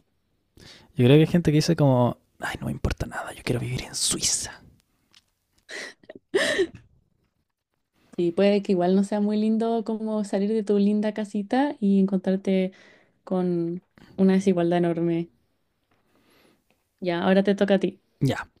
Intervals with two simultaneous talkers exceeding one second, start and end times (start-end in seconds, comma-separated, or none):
none